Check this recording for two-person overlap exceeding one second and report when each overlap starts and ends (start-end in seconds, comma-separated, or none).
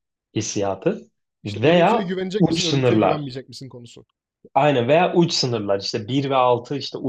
1.5-3.4